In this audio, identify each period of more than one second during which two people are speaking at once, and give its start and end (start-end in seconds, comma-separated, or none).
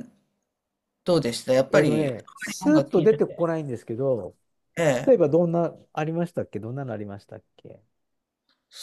1.7-3.5